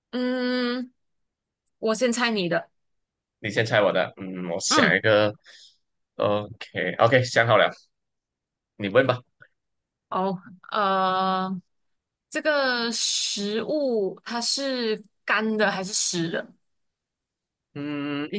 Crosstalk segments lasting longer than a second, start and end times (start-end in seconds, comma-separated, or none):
none